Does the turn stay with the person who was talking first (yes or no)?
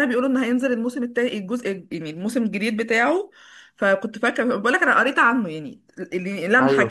yes